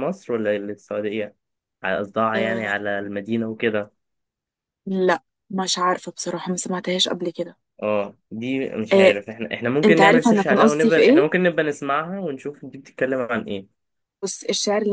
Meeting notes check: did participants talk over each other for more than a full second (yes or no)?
yes